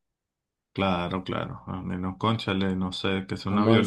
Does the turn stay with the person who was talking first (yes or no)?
no